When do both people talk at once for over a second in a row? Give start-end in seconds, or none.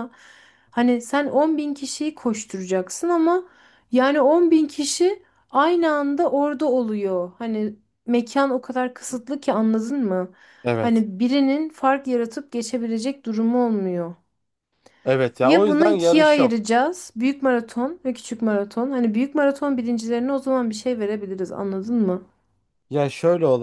15.4-16.6